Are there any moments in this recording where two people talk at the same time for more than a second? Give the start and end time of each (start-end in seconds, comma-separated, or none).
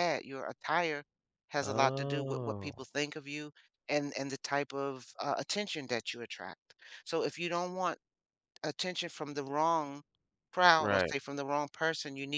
1.6-2.9